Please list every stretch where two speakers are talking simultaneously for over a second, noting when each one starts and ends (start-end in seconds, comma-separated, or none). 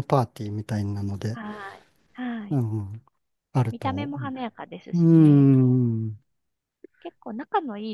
none